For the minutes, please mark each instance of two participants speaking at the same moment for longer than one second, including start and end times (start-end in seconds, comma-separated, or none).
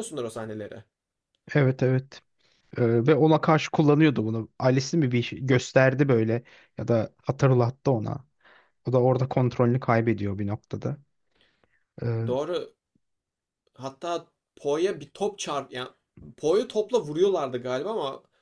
none